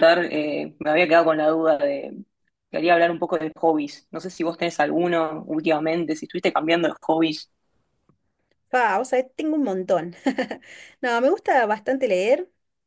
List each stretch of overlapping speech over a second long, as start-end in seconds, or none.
none